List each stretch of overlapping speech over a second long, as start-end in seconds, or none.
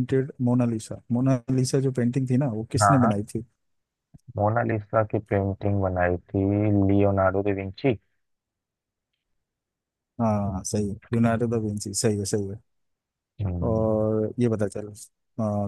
none